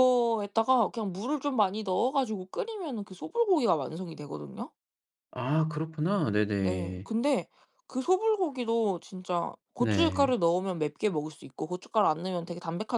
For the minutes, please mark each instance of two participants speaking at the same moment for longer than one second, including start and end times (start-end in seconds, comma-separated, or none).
none